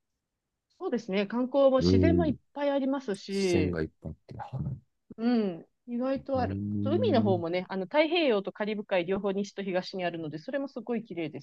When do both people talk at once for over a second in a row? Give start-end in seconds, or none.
6.2-7.4